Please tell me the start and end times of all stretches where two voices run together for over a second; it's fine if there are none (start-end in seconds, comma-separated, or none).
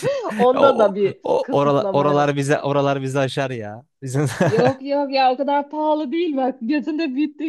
0.5-2.4